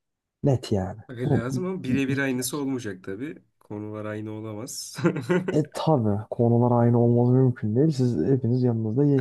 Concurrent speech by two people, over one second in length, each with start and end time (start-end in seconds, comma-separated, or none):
1.1-2.6